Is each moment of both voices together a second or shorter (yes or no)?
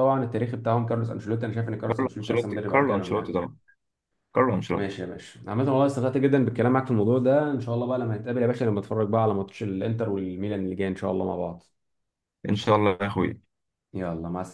no